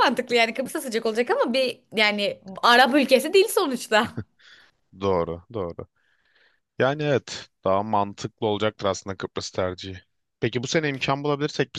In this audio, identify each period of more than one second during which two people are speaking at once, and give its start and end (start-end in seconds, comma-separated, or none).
none